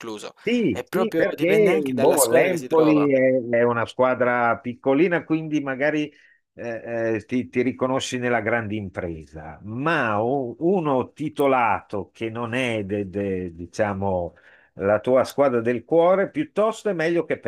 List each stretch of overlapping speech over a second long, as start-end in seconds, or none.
0.7-3.1